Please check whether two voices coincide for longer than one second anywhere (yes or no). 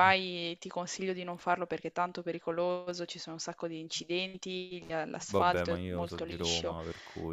yes